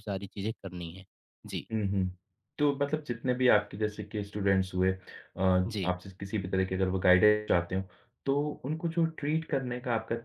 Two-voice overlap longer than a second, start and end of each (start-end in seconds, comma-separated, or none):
none